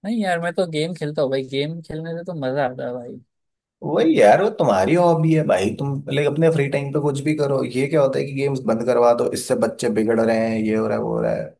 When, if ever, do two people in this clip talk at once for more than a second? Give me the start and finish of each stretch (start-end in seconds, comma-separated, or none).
none